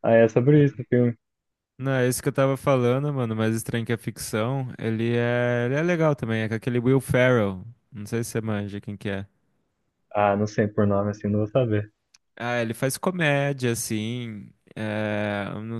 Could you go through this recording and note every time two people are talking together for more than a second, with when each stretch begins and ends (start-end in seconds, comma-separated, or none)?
none